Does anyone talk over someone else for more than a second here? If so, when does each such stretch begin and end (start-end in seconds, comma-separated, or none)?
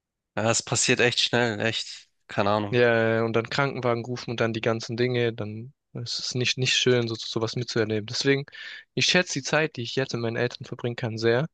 none